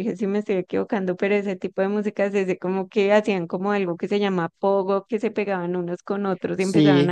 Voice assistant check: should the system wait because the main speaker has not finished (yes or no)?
yes